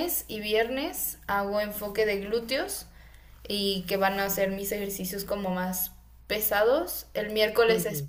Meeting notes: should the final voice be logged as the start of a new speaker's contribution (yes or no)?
no